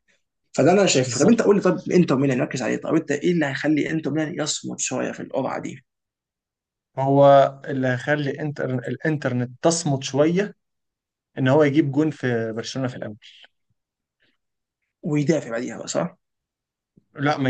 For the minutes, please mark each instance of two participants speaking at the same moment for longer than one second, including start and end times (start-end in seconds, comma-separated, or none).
none